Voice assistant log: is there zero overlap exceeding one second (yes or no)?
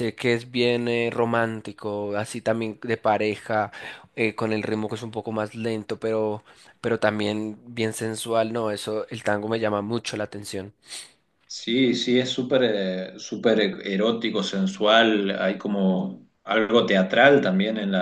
yes